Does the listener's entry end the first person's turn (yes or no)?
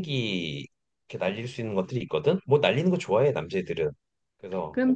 yes